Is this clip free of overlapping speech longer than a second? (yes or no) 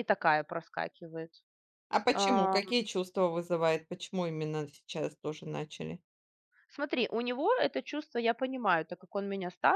yes